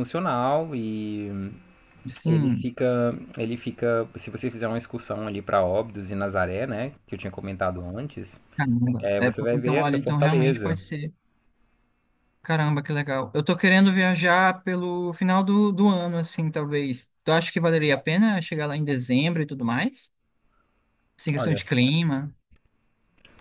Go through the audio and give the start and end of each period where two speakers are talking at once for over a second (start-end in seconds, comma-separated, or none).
9.0-10.8